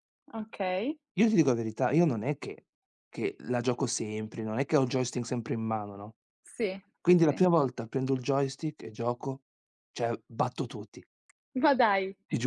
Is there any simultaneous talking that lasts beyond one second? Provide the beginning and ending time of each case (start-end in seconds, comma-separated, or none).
none